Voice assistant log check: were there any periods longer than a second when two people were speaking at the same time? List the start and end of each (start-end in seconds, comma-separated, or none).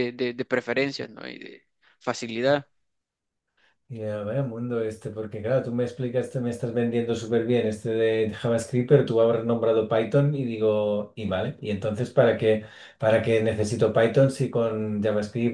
none